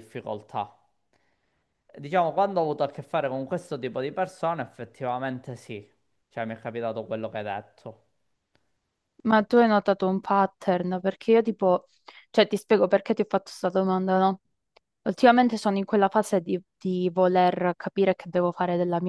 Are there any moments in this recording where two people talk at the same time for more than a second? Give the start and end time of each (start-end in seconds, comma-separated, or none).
none